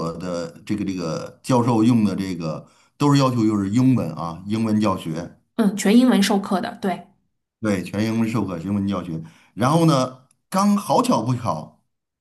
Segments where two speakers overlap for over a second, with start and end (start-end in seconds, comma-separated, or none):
none